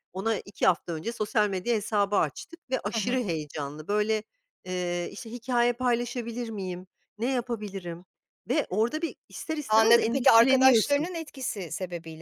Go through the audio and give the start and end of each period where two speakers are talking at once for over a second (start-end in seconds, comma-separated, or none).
9.7-11.1